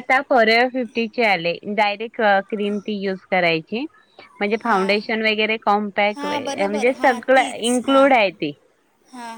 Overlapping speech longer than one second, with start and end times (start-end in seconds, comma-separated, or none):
6.2-8.1